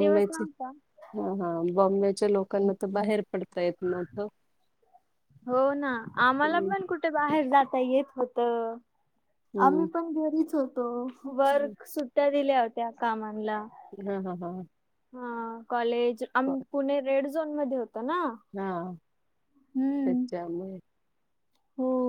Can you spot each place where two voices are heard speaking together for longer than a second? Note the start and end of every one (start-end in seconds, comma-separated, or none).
none